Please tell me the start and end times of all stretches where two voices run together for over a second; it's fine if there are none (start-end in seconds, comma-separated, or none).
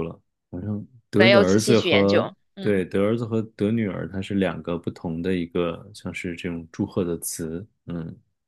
1.1-2.8